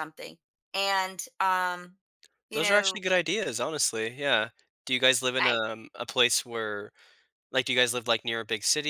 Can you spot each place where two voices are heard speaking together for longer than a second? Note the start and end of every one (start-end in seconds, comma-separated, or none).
none